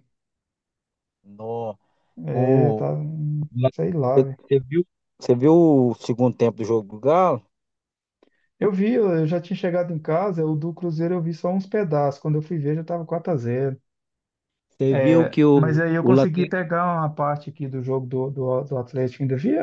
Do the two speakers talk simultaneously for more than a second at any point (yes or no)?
yes